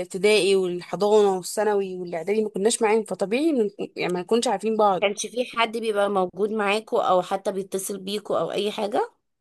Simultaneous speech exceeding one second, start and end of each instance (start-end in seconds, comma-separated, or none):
none